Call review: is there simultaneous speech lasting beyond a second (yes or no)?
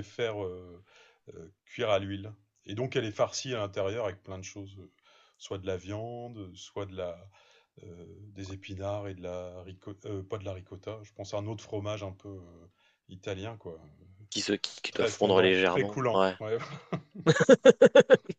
yes